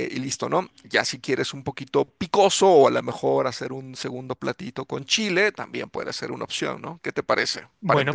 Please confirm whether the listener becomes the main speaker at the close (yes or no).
yes